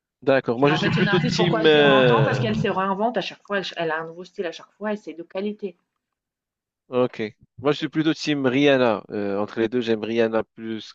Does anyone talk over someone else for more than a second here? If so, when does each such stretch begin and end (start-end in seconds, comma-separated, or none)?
0.7-2.4